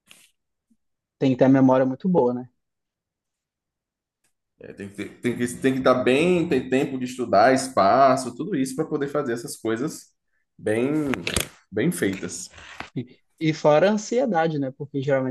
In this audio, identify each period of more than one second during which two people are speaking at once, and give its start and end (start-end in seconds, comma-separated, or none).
none